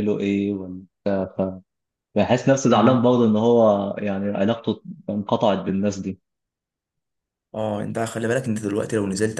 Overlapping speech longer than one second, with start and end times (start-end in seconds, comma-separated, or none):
none